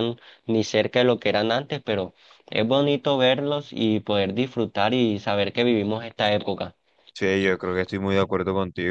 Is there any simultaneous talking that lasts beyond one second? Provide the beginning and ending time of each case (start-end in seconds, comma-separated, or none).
none